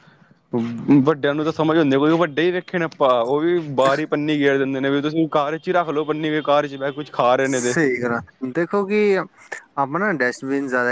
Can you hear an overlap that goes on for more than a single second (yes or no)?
no